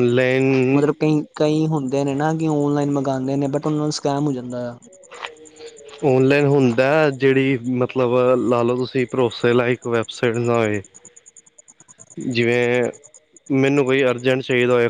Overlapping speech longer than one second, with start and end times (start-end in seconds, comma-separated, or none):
none